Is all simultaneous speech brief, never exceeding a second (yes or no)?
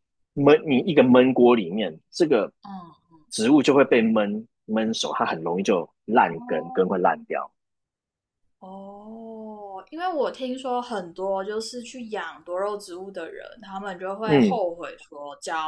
yes